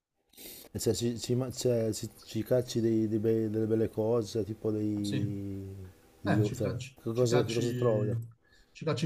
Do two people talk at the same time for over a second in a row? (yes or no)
yes